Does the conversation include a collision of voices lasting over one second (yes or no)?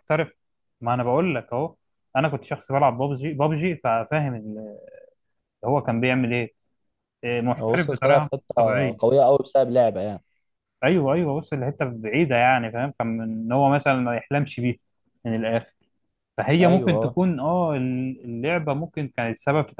yes